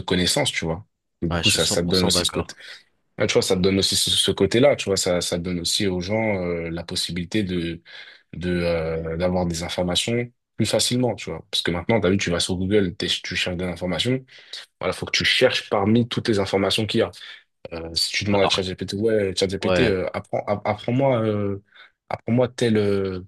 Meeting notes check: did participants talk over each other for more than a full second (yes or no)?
yes